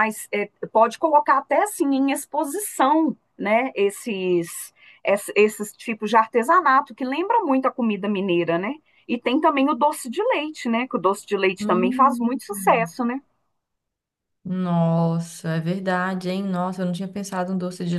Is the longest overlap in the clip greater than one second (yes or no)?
yes